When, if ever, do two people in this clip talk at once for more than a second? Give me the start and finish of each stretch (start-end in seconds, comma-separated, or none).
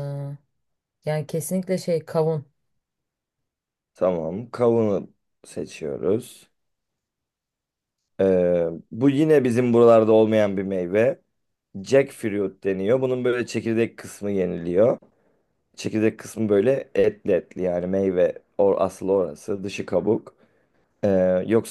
none